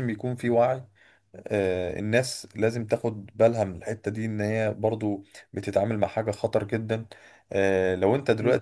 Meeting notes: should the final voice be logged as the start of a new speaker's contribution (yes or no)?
no